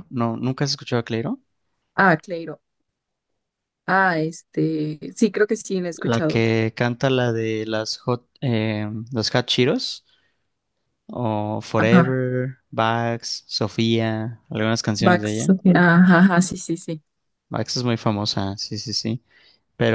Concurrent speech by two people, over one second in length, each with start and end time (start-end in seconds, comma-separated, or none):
none